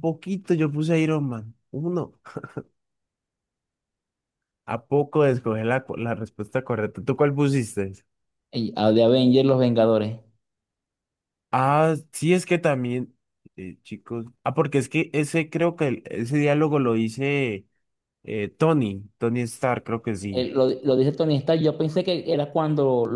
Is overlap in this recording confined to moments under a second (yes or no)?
yes